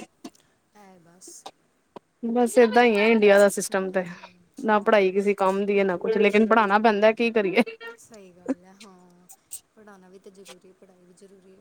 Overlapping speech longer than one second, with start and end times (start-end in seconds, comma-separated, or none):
none